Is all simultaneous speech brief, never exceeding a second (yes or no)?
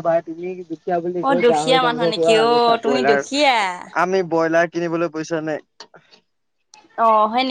no